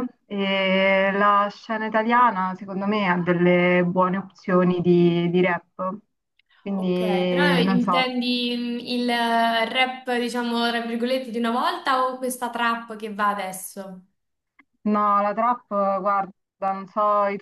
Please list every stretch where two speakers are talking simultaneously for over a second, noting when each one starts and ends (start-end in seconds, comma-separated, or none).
6.8-8.2